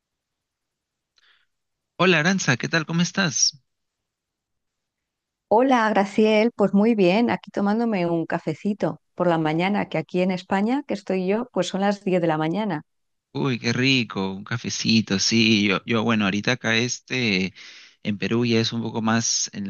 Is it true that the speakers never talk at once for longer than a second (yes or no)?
yes